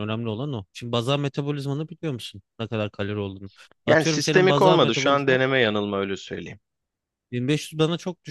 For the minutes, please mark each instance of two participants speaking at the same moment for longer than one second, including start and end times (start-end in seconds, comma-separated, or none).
3.9-5.4